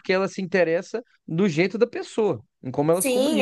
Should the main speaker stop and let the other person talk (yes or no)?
yes